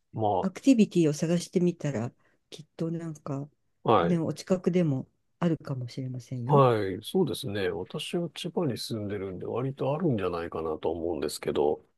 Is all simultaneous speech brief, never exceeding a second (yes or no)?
yes